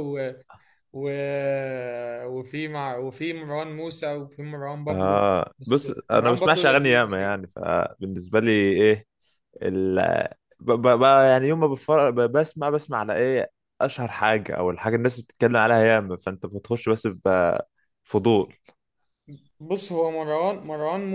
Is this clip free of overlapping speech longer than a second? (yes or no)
no